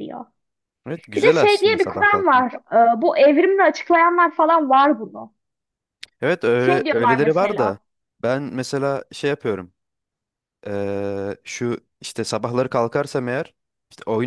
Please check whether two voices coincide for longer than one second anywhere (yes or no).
yes